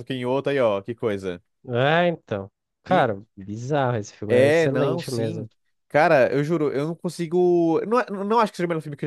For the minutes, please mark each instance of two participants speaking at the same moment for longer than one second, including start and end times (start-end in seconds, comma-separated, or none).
4.3-5.5